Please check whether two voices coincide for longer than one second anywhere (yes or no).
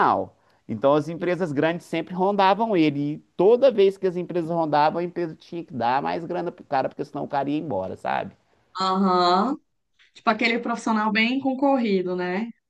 no